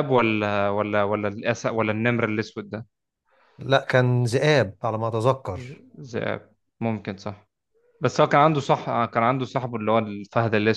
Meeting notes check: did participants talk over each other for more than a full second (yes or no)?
no